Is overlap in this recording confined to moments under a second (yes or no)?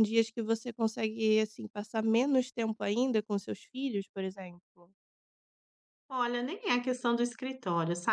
yes